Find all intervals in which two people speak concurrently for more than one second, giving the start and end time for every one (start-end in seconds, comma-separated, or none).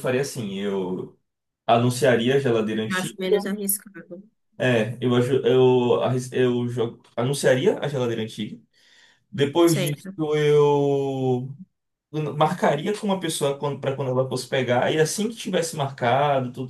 none